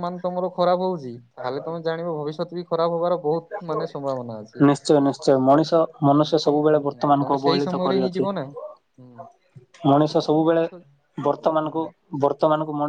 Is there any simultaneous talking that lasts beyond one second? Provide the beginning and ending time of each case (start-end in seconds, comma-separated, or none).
6.2-8.3